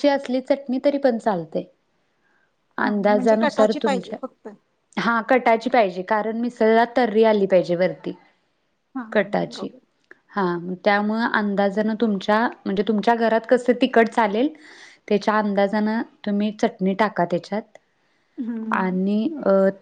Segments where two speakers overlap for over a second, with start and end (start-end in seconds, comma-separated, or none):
2.8-4.2